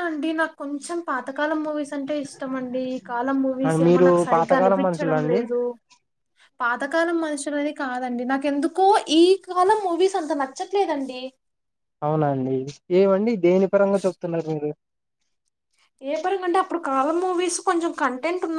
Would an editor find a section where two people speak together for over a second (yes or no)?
yes